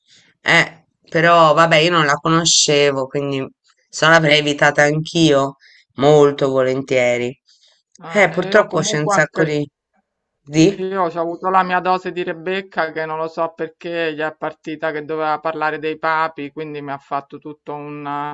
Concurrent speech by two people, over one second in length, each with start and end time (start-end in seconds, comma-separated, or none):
8.1-9.5